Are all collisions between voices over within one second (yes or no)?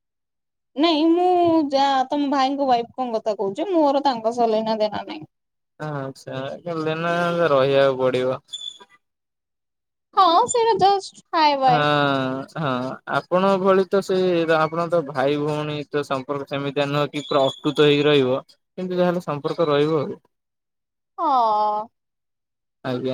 yes